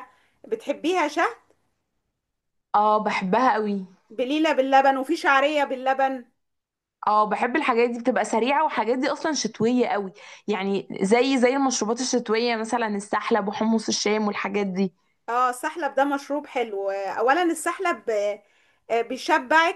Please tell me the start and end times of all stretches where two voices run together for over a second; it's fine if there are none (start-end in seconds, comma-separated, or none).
none